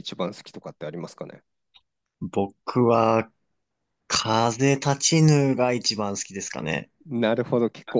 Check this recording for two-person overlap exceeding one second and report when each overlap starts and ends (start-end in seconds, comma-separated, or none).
none